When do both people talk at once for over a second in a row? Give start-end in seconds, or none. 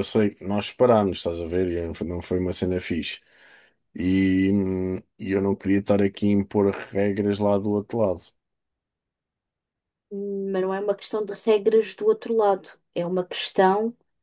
none